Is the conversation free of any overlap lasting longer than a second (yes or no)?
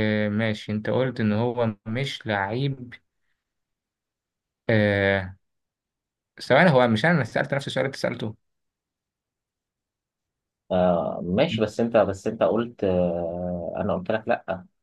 yes